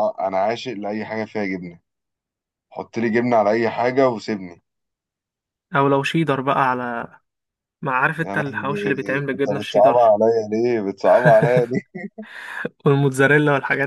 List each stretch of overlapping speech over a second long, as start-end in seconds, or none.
8.2-10.2